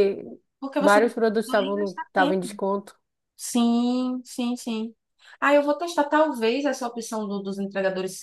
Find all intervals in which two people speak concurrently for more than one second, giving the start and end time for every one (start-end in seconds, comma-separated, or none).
0.8-2.6